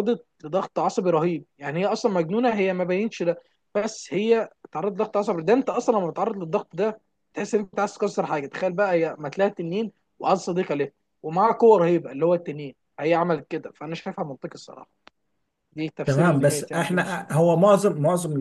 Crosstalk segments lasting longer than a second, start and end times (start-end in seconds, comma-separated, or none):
16.1-17.3